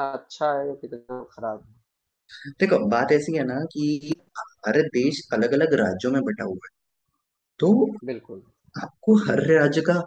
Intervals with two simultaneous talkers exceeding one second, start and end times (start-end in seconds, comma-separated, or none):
none